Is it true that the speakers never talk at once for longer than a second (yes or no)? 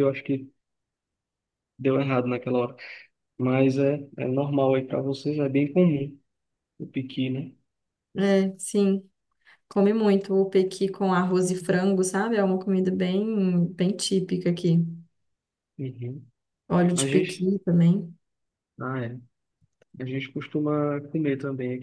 yes